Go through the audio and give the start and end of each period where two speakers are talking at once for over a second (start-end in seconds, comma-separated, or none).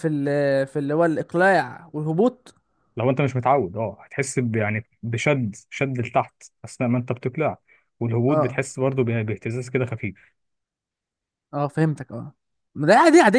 none